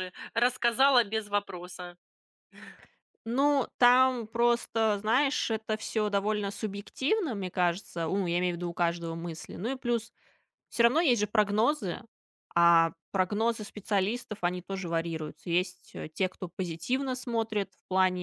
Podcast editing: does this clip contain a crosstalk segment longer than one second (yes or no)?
no